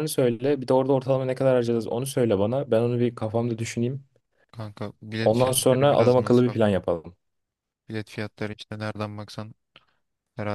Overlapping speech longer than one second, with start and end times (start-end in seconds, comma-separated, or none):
5.2-6.8